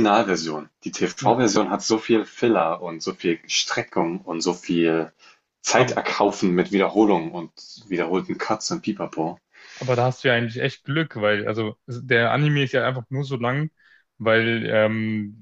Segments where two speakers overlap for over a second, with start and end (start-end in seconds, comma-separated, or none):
none